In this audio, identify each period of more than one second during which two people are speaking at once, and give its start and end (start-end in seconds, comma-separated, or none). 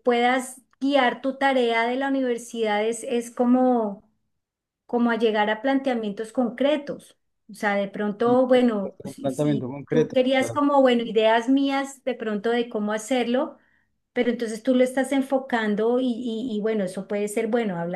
9.0-10.6